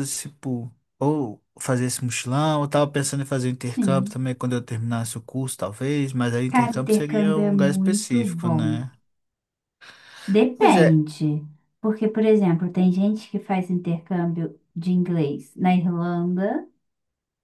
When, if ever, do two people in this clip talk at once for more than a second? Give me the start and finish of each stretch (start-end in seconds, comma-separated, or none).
6.5-8.8